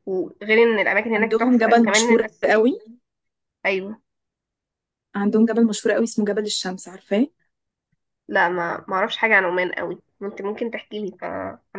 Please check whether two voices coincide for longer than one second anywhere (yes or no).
yes